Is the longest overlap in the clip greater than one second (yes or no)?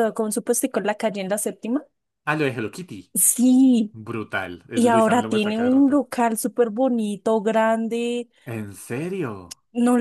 yes